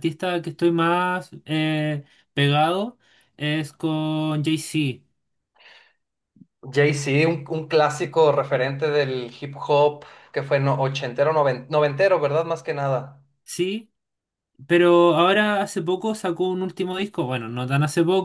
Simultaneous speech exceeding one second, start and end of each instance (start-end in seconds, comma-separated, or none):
none